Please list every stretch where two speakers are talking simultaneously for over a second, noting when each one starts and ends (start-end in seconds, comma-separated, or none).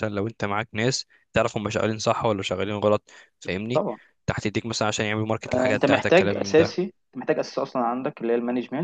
5.5-6.8